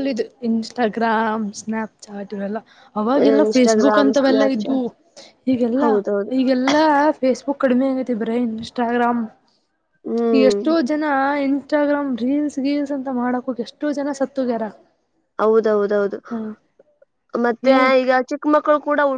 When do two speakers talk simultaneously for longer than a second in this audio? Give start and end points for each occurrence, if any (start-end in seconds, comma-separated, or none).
3.4-4.8